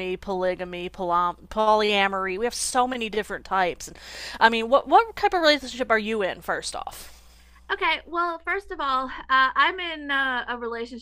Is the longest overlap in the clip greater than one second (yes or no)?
no